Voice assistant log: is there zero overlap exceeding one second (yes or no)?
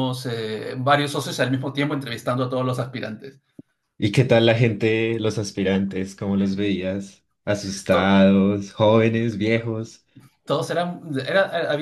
yes